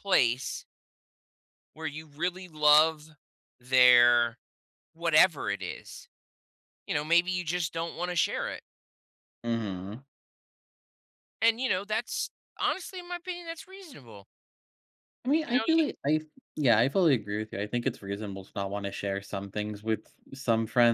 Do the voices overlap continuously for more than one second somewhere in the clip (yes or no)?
no